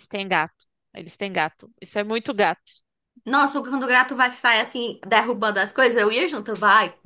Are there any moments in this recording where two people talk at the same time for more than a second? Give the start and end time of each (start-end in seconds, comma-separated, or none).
none